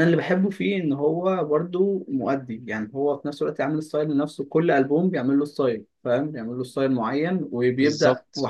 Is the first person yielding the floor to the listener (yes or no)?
no